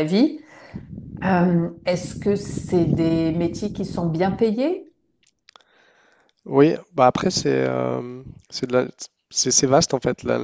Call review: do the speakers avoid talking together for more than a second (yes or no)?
yes